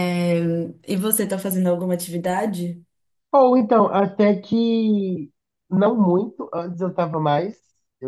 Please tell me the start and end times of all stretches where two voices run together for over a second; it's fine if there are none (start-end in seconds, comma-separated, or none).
none